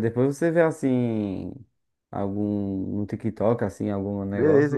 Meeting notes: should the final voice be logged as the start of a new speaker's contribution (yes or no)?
yes